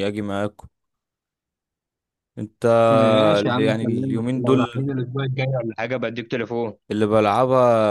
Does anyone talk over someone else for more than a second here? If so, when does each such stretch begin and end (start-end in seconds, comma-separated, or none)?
3.4-4.9